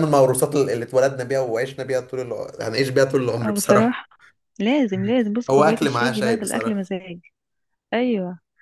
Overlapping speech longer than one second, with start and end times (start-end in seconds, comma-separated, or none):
5.5-6.8